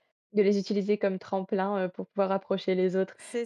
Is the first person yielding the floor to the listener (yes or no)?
no